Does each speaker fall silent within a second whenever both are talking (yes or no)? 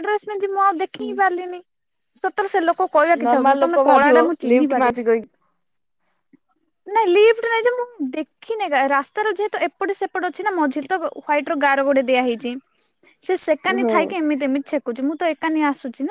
no